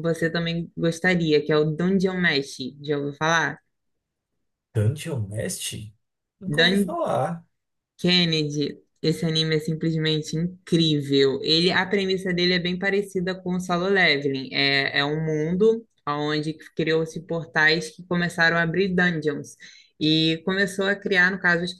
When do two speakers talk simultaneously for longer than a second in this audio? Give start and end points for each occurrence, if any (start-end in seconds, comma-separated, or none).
none